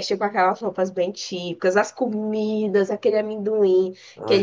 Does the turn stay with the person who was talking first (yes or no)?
yes